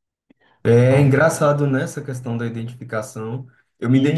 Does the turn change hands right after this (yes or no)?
no